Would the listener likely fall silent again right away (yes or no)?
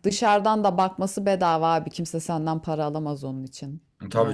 no